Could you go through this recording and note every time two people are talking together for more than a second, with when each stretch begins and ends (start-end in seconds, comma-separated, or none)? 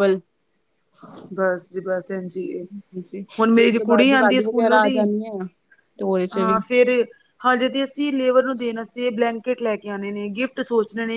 3.4-5.0